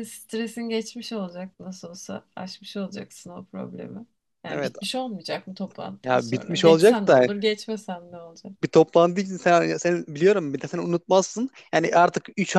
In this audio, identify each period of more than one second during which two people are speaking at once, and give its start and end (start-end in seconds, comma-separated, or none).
6.0-7.3